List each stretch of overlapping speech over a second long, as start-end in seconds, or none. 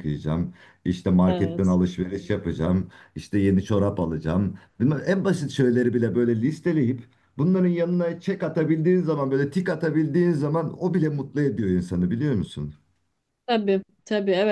none